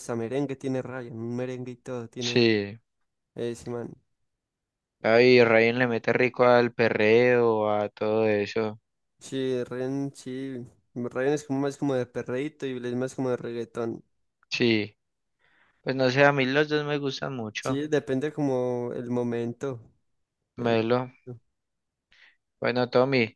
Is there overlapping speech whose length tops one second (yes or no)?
no